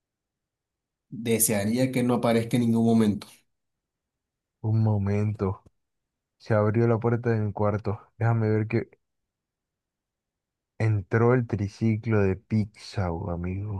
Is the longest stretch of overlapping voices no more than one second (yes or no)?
yes